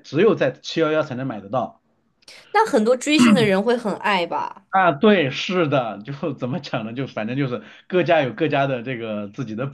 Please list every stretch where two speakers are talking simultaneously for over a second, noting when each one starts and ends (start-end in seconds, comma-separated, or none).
none